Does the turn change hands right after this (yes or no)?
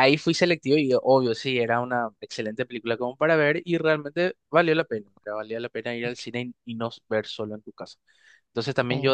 no